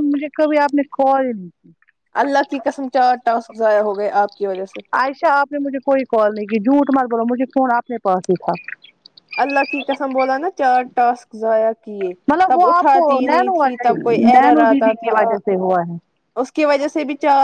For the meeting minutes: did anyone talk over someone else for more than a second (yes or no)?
yes